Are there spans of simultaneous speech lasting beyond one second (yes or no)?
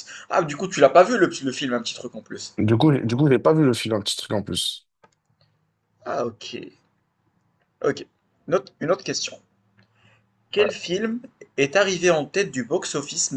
no